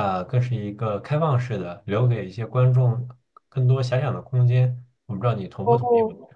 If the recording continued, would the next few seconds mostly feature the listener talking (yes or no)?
yes